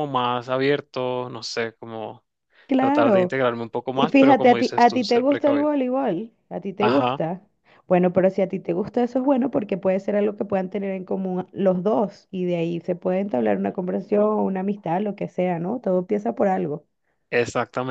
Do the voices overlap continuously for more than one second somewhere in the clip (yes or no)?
yes